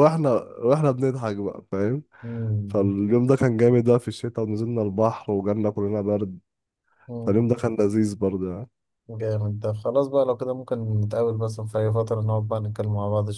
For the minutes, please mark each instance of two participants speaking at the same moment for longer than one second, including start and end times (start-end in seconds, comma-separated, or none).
none